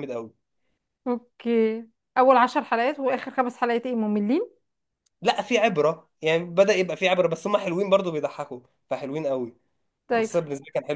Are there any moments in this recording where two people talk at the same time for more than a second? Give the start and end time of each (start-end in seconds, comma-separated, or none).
none